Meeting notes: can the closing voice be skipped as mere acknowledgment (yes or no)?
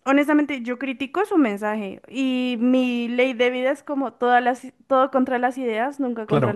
no